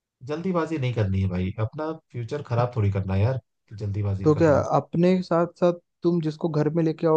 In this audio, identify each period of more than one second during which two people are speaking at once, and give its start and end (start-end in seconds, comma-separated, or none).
none